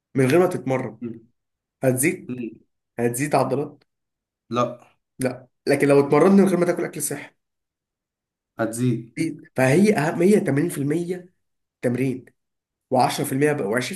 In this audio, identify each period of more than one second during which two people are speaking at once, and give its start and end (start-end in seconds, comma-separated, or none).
none